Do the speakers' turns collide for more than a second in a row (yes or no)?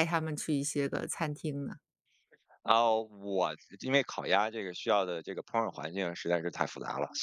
no